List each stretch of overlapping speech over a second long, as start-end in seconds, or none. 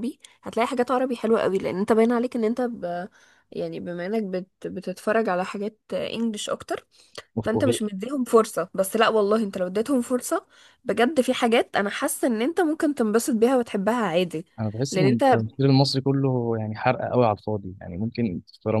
none